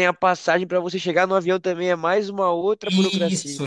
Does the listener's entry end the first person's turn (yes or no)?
yes